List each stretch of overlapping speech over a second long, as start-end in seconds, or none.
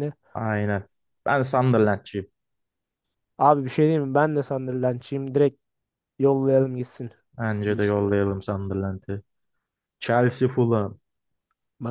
none